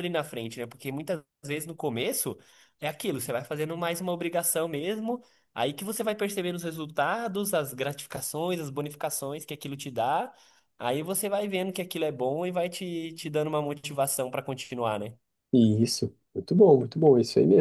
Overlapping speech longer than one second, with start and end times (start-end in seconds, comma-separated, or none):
none